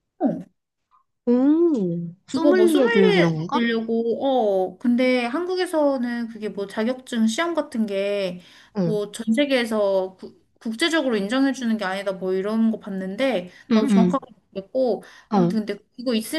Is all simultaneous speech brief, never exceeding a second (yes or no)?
no